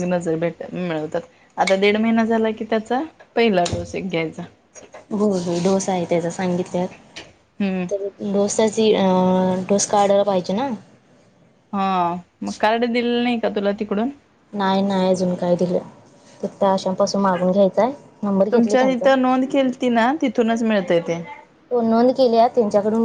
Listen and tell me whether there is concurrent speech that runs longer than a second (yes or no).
no